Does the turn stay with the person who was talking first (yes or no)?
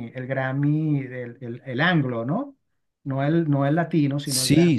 no